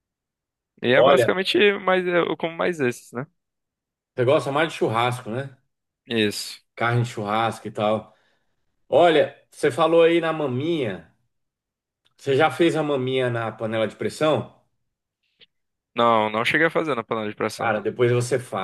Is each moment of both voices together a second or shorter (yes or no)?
yes